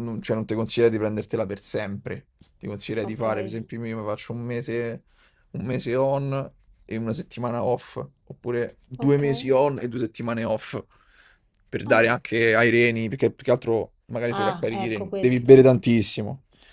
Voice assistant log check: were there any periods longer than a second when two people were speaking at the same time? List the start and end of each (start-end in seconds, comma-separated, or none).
14.3-15.7